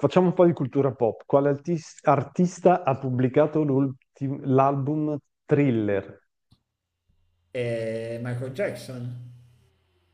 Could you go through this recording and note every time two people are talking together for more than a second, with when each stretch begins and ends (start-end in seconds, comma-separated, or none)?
none